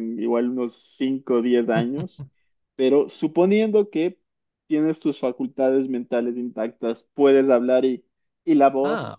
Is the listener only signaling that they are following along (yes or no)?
yes